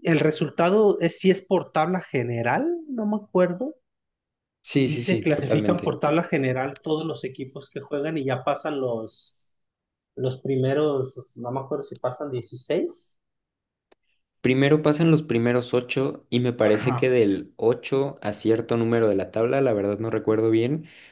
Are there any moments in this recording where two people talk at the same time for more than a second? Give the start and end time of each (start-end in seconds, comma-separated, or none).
4.6-6.0